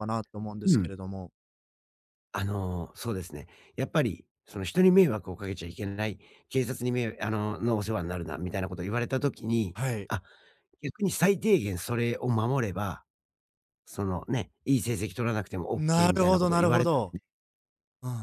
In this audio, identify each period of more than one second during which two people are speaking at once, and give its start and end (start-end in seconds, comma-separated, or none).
15.8-17.1